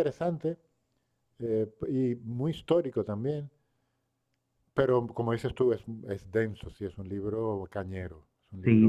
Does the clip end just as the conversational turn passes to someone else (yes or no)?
yes